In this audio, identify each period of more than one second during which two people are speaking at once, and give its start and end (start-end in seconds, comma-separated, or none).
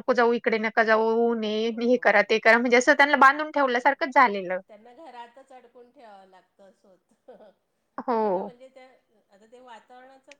2.7-3.9